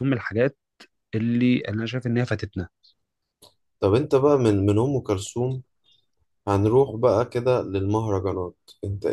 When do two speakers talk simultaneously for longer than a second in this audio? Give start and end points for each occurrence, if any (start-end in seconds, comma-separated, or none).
none